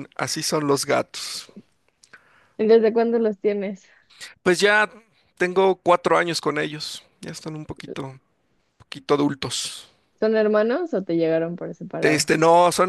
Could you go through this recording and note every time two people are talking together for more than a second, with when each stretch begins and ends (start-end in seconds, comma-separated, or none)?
none